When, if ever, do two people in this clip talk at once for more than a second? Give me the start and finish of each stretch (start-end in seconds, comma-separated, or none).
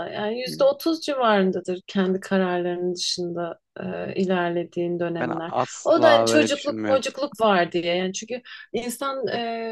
5.2-7.0